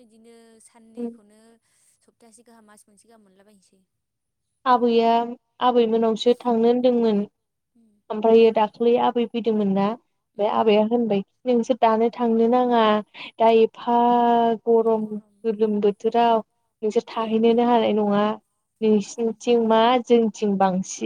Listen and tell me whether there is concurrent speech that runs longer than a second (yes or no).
yes